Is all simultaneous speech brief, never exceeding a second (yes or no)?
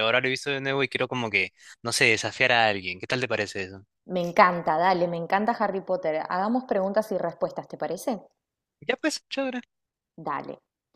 yes